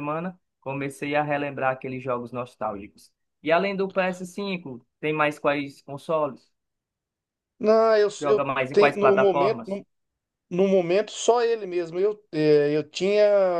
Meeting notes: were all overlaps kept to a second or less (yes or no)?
no